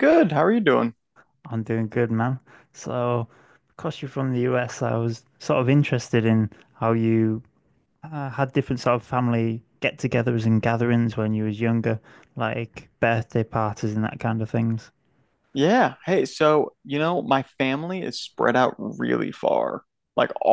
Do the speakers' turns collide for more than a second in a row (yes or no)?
no